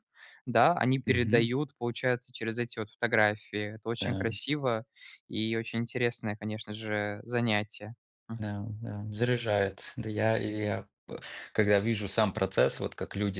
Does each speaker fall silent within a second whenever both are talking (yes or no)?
yes